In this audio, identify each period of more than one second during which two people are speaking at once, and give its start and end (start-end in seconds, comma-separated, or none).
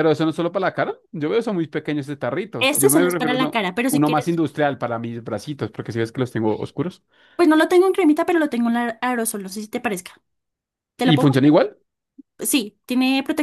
2.6-4.4